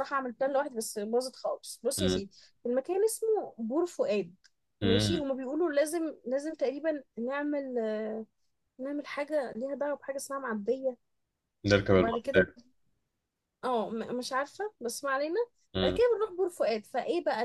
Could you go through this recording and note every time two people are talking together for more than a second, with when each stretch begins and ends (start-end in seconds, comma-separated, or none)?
none